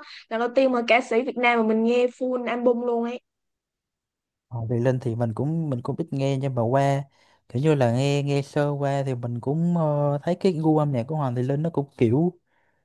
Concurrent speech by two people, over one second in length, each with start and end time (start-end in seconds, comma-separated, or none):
none